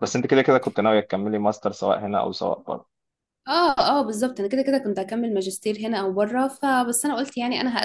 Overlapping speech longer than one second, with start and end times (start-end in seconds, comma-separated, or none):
none